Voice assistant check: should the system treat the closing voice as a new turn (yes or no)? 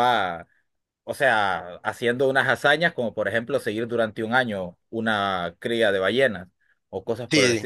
yes